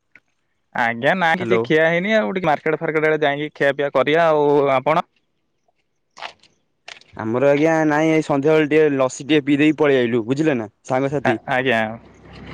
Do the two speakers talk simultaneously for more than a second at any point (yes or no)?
no